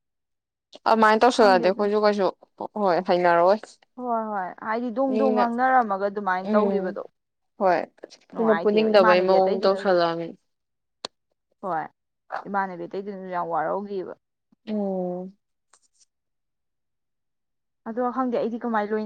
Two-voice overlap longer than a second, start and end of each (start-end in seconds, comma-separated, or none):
8.4-9.8